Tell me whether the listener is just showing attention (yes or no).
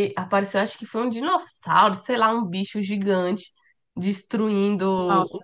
yes